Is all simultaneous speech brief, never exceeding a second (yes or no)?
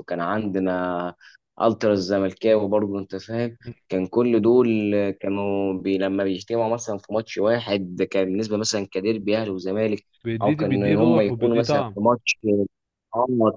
no